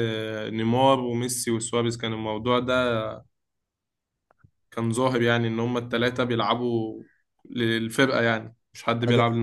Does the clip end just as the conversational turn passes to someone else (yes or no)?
yes